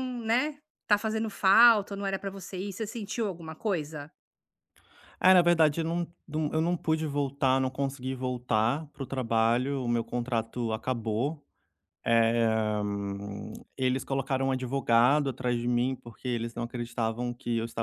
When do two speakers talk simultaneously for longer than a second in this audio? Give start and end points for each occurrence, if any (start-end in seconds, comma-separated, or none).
none